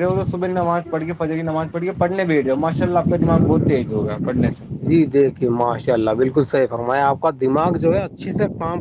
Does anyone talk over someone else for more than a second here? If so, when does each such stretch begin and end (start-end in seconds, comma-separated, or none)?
none